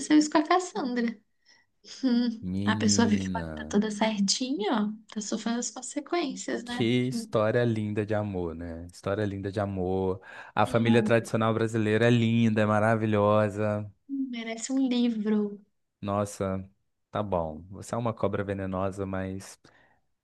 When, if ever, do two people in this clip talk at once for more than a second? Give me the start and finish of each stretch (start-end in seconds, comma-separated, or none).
2.4-3.7